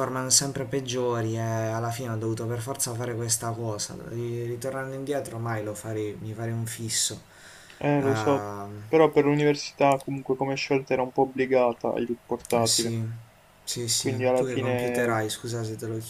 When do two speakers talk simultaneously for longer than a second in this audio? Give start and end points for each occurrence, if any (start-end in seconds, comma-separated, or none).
13.9-15.2